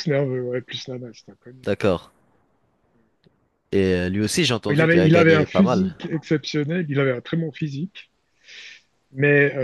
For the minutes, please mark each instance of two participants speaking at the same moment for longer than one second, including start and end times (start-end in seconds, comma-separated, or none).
4.7-6.0